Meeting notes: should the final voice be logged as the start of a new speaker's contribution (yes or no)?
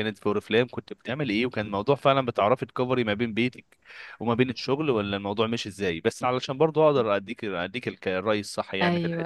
yes